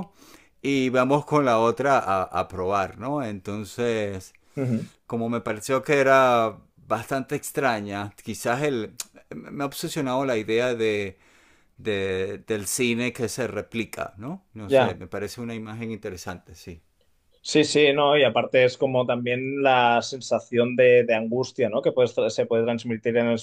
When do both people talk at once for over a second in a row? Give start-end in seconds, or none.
none